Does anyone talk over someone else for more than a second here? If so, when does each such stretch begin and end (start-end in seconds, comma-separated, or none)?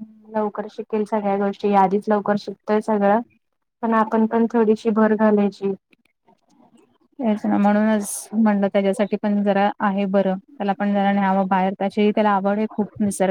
none